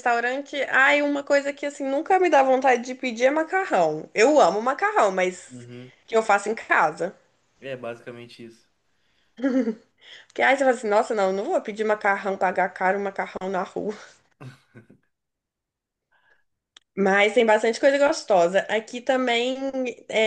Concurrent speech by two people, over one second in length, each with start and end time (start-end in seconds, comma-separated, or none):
none